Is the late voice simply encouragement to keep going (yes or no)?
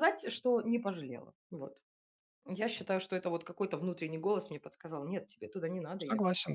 no